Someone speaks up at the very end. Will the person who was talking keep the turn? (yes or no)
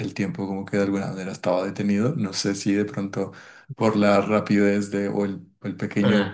yes